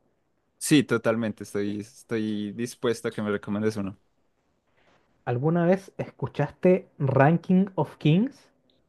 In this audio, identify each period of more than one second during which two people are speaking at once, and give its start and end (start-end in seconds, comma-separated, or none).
none